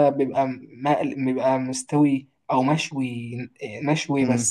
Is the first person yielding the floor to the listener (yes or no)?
no